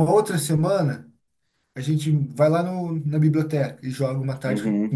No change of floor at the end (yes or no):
no